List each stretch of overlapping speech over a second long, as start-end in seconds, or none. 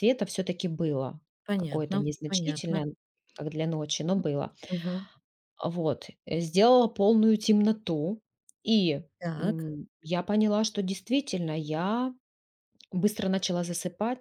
1.6-2.8